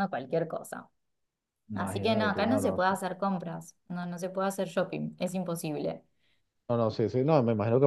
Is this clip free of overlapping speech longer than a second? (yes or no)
no